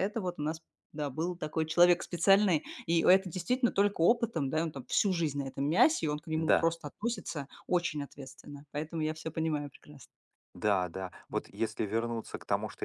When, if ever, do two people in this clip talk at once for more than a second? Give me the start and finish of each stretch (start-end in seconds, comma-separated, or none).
none